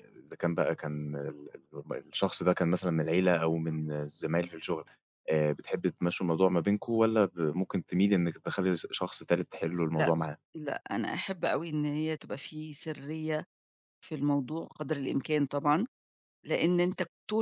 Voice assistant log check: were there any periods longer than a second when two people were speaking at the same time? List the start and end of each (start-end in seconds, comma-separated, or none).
none